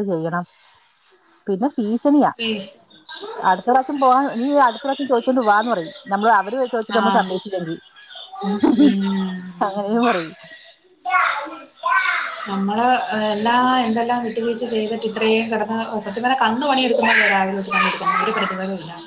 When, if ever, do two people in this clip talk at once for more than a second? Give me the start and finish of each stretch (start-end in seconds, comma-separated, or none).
none